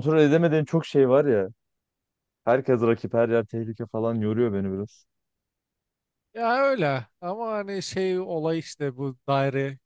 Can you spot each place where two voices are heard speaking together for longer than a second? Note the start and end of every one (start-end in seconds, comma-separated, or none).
none